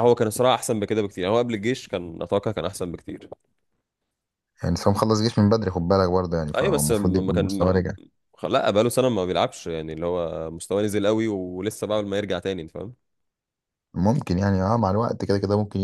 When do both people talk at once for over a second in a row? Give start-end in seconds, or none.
6.5-7.9